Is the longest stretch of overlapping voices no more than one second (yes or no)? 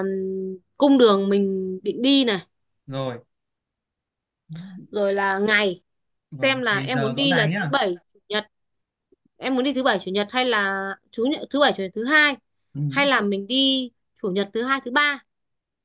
no